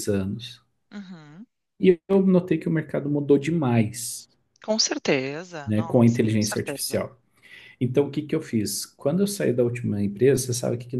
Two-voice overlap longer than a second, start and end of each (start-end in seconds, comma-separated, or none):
5.7-7.1